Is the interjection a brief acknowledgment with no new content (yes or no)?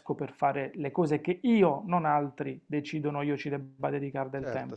no